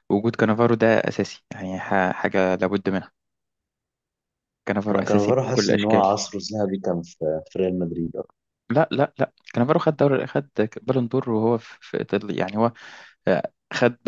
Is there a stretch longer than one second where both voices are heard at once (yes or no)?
yes